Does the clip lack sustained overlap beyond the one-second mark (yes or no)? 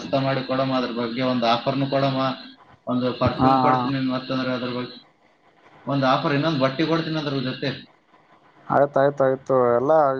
yes